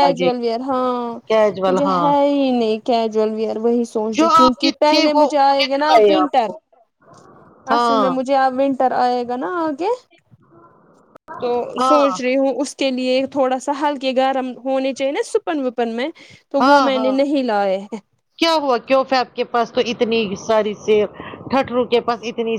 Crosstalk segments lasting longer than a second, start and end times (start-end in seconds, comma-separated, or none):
4.2-6.5